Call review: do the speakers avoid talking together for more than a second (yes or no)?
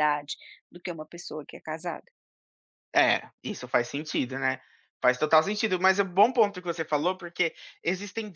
yes